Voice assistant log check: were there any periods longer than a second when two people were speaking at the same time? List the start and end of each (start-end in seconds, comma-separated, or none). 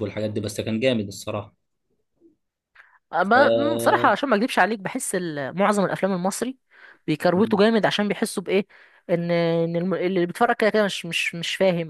none